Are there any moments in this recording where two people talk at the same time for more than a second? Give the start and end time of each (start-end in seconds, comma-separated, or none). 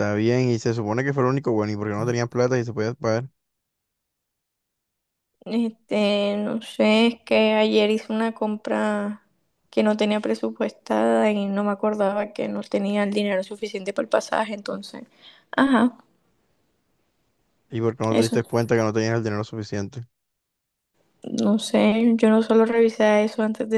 none